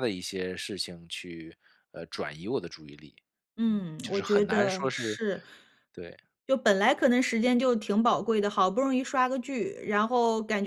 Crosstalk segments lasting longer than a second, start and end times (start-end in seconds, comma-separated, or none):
3.7-5.2